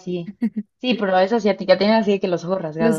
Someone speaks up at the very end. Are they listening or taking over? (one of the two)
taking over